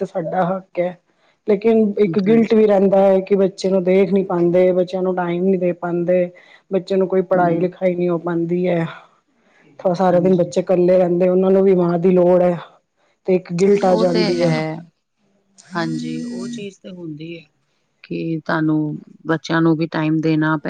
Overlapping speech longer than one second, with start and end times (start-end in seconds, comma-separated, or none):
none